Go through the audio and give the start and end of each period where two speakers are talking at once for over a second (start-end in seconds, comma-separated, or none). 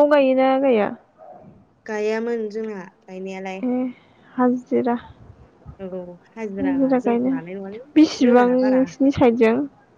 none